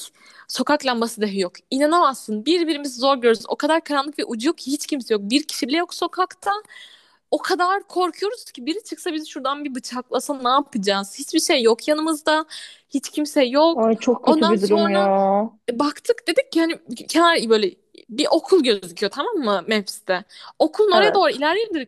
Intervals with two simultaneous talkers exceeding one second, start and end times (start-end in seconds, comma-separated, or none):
13.7-15.1